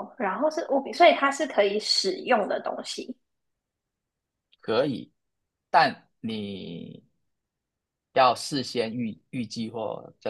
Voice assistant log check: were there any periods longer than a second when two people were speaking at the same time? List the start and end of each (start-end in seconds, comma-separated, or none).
none